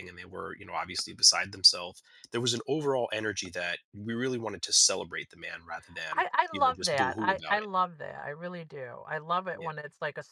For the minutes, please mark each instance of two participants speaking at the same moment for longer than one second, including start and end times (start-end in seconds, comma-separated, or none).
6.1-7.7